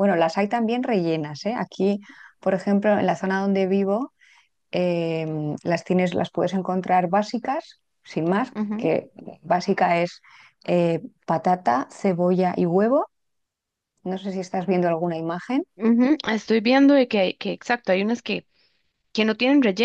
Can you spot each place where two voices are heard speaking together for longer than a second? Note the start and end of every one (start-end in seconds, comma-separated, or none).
none